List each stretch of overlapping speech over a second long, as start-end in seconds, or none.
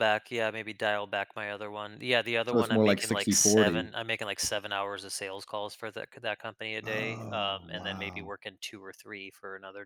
2.5-3.9, 6.8-8.3